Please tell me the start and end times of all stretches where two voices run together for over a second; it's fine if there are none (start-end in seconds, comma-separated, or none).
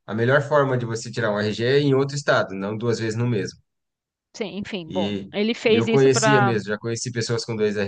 4.8-6.5